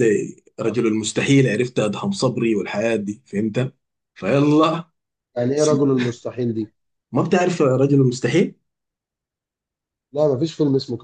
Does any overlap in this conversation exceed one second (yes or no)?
no